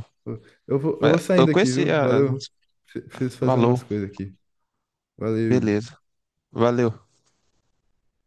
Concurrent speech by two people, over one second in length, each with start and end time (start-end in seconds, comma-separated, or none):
1.0-2.5